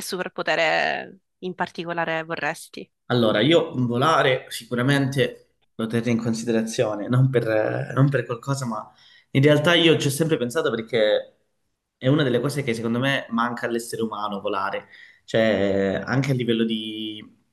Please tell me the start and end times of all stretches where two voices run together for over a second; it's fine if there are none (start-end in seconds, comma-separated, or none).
none